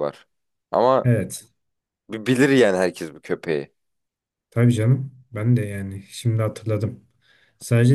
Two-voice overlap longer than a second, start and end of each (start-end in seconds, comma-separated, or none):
none